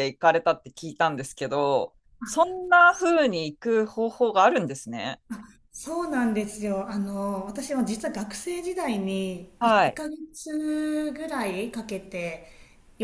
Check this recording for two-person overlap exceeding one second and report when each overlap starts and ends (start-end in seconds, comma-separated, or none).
none